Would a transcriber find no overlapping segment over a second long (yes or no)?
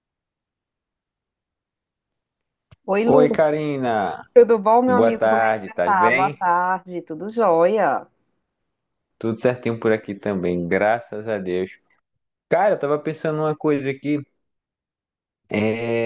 no